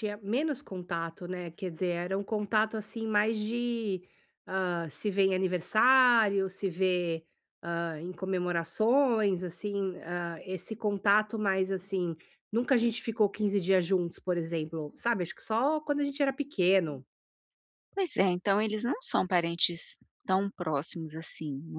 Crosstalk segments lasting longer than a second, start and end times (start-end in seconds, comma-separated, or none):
none